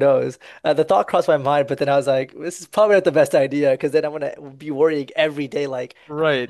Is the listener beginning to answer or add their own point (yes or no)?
yes